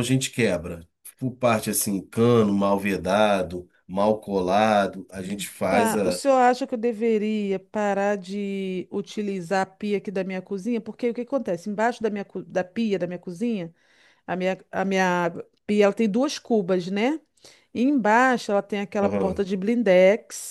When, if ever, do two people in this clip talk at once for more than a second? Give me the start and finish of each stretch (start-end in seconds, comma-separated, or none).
none